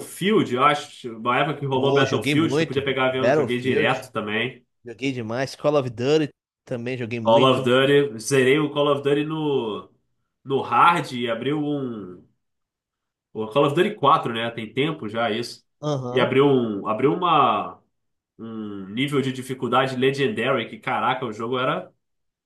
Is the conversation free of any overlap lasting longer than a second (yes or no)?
no